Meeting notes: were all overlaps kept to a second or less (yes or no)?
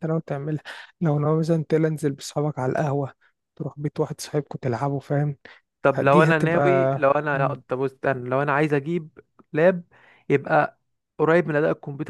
no